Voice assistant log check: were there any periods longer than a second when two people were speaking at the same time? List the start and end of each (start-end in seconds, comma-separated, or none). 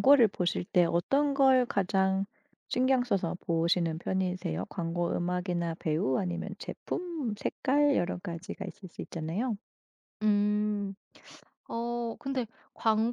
none